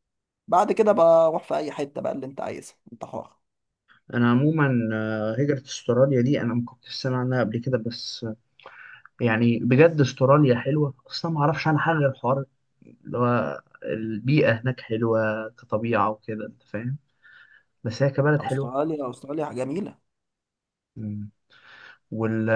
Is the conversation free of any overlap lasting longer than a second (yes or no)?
yes